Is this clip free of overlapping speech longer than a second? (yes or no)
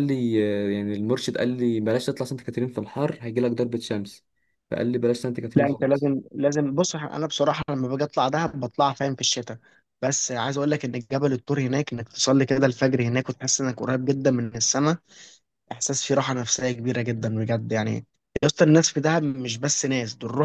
yes